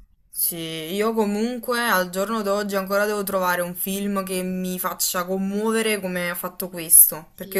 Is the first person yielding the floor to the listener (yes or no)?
no